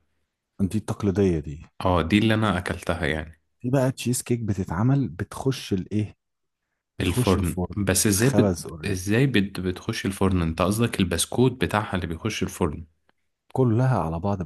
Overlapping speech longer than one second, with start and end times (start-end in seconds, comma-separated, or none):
7.0-9.0